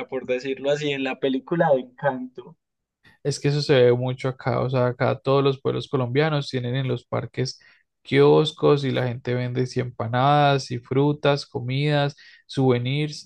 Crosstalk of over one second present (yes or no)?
no